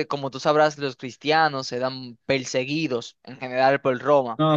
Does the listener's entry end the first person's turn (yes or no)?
yes